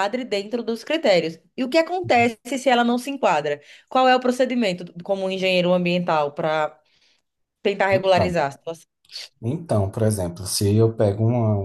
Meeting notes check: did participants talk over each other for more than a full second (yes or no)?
no